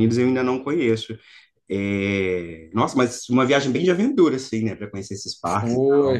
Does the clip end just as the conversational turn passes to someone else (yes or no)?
yes